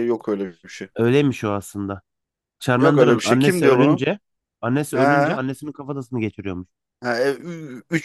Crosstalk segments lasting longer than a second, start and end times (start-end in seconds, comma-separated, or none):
2.8-4.1